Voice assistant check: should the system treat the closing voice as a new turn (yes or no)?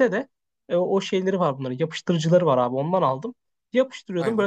no